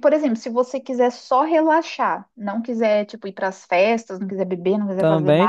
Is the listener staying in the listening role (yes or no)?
yes